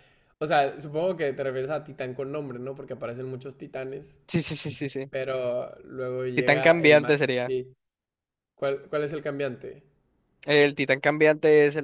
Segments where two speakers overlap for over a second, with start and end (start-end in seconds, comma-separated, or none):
6.3-7.5